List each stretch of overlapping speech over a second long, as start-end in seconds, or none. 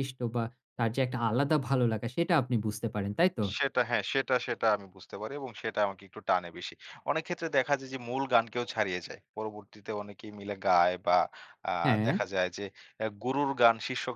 none